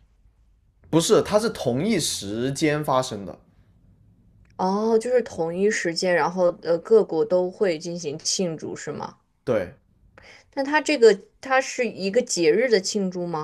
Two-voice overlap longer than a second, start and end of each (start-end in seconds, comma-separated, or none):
none